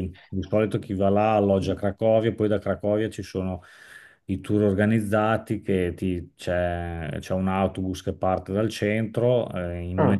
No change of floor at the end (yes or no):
yes